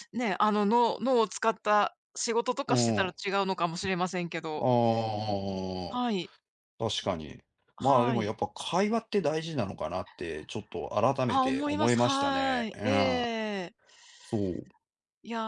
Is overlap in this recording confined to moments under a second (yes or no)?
no